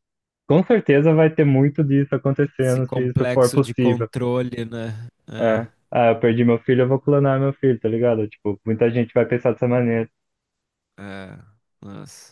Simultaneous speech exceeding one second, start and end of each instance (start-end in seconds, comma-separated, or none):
2.6-4.1